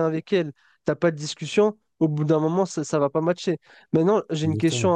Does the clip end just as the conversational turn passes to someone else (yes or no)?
no